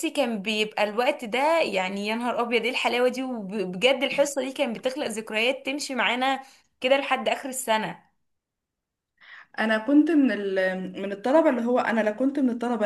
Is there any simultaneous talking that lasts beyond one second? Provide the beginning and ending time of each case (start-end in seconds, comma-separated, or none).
none